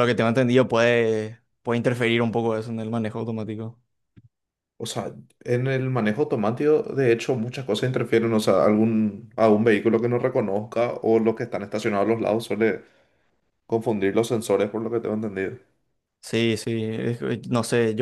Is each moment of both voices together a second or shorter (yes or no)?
yes